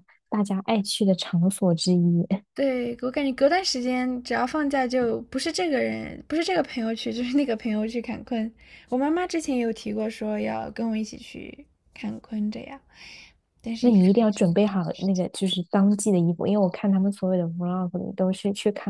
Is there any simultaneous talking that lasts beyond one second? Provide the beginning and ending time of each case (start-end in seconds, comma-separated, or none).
13.8-15.2